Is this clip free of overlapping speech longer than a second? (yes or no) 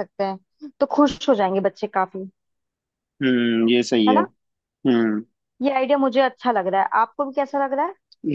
yes